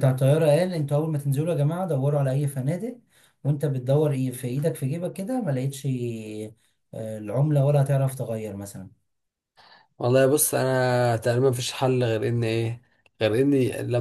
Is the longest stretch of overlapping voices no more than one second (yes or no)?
yes